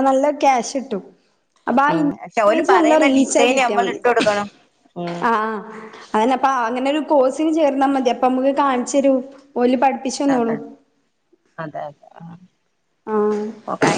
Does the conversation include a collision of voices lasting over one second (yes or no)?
yes